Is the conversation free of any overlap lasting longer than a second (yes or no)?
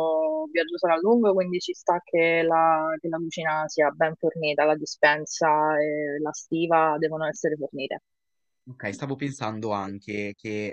yes